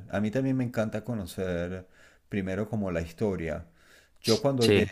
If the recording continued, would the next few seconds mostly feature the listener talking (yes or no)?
no